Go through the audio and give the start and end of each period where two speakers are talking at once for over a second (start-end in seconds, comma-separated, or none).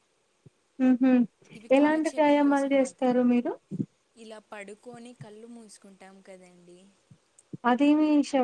1.8-3.2